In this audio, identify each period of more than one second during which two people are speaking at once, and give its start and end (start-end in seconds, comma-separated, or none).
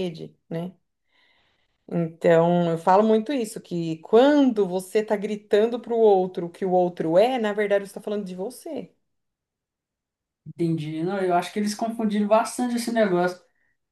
none